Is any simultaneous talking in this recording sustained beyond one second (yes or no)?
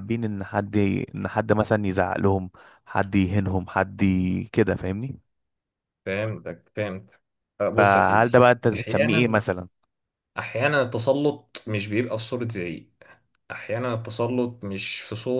yes